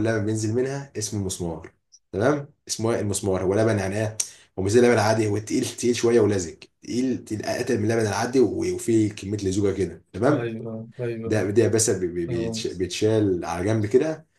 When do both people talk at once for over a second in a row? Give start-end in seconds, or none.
none